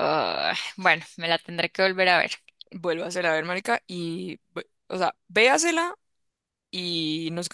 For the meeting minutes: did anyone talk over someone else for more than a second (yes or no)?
no